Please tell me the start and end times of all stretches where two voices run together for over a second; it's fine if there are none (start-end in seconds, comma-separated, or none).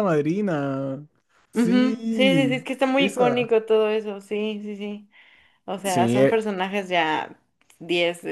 1.5-3.5